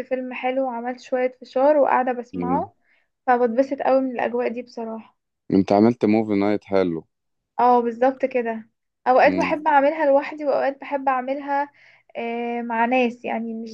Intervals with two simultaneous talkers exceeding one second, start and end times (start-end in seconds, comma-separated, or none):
none